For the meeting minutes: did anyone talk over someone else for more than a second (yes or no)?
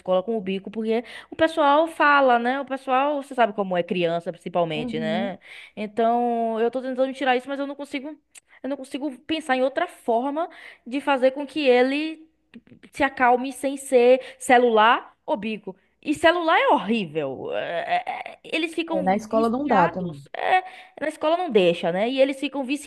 yes